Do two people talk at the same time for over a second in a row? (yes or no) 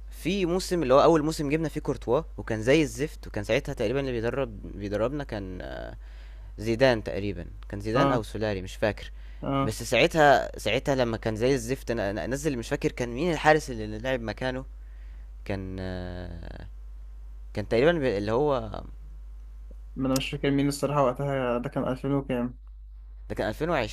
no